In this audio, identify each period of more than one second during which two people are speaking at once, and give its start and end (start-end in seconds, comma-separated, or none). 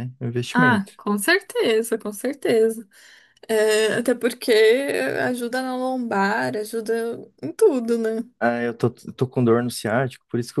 none